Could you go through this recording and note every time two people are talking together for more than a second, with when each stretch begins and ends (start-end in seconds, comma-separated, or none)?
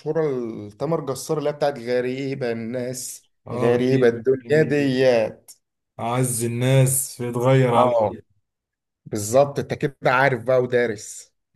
3.5-4.8